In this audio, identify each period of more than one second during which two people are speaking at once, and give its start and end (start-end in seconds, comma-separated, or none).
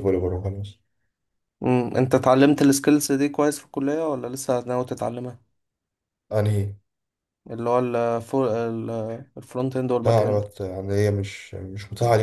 none